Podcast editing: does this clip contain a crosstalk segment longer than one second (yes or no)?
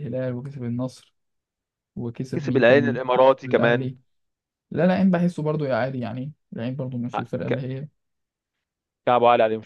yes